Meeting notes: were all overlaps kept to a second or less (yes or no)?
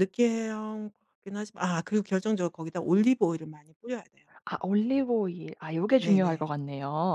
yes